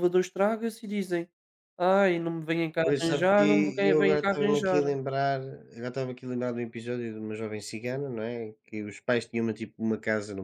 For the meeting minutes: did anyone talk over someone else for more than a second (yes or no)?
yes